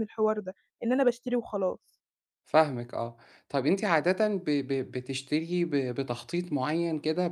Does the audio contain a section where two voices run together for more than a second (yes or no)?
no